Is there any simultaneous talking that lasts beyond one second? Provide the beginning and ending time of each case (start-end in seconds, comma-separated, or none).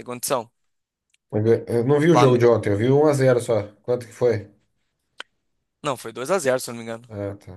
none